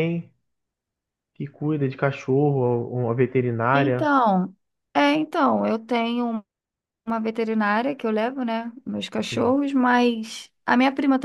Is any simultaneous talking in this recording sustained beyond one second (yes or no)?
no